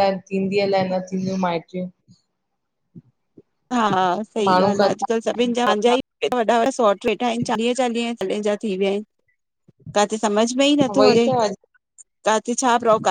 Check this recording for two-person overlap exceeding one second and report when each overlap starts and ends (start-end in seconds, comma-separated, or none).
4.5-6.0